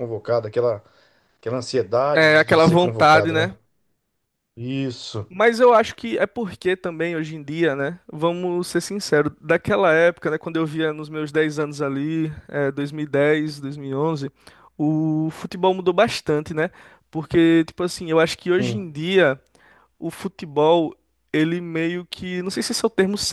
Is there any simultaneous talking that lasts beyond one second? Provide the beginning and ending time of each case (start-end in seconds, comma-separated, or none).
2.1-3.5